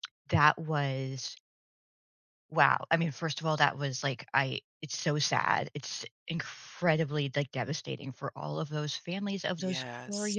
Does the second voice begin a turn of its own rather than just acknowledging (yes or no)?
no